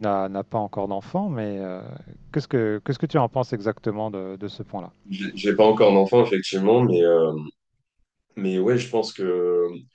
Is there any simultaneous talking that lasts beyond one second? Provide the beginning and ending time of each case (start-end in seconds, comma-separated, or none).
none